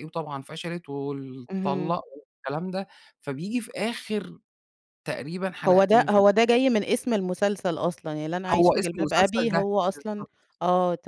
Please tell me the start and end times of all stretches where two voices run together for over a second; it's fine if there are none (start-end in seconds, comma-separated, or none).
8.5-10.2